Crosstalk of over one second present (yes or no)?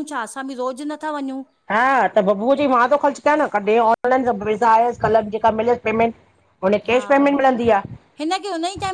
no